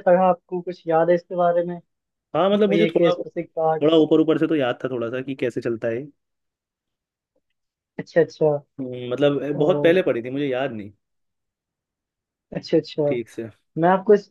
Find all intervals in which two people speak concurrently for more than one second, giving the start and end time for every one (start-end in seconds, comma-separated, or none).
none